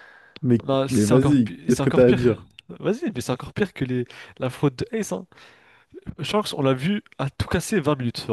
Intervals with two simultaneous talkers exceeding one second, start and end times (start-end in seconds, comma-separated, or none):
0.6-2.2